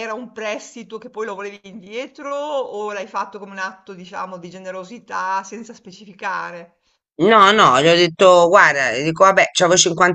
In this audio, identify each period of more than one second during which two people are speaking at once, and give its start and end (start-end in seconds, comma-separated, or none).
none